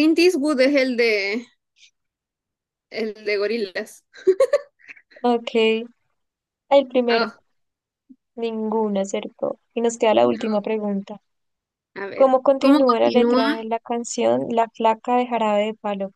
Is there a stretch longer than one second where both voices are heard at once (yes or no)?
yes